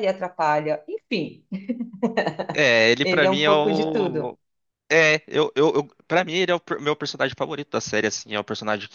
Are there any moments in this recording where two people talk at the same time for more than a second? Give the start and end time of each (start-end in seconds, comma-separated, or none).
3.0-4.4